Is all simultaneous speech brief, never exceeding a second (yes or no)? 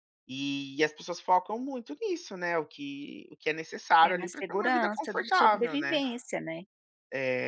no